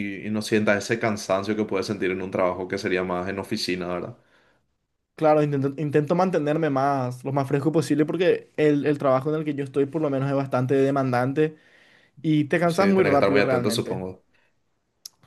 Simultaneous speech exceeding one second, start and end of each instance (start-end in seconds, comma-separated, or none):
12.6-14.0